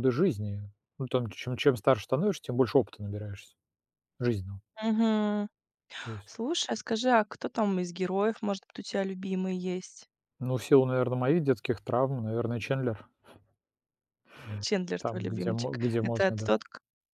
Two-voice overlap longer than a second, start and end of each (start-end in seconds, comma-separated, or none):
15.0-16.5